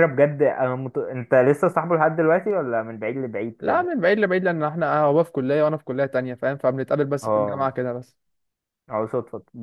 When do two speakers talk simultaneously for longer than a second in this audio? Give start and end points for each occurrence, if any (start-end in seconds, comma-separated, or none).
none